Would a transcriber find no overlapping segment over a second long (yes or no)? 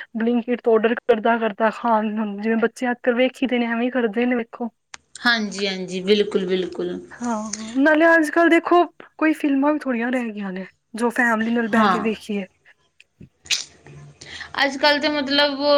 yes